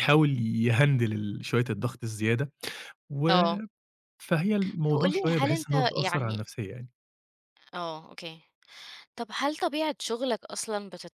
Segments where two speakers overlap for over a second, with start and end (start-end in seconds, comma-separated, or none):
4.9-6.4